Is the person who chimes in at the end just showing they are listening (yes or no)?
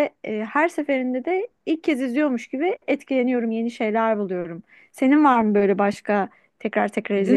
no